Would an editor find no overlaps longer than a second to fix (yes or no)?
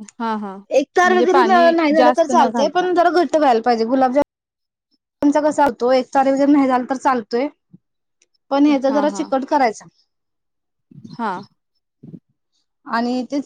no